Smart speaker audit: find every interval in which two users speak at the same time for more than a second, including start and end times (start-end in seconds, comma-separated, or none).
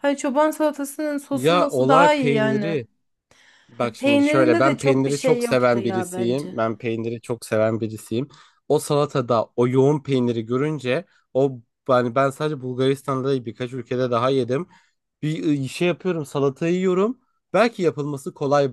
1.3-2.8, 3.8-6.6